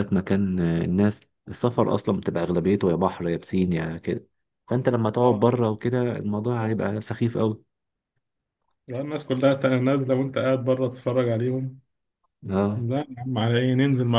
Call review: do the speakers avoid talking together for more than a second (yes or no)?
yes